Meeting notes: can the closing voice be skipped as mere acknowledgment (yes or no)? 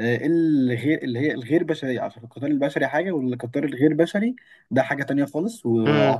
yes